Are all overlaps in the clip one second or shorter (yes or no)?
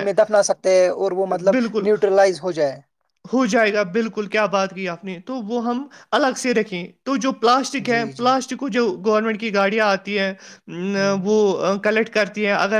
yes